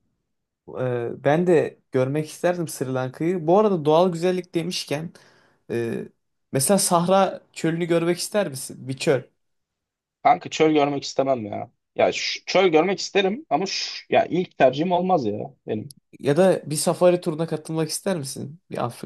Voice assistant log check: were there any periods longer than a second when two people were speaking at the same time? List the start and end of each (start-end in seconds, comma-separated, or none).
none